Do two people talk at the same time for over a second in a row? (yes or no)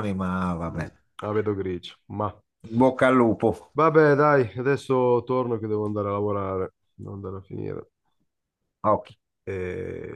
no